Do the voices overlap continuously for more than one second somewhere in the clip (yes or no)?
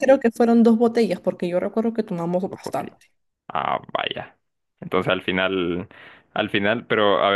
no